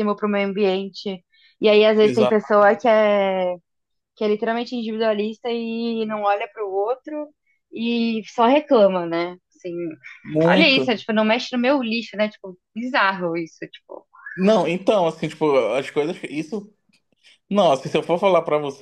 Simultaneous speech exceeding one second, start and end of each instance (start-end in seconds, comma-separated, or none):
none